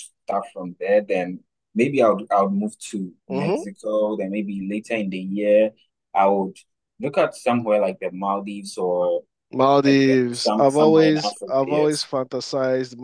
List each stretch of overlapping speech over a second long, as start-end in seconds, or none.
9.8-12.1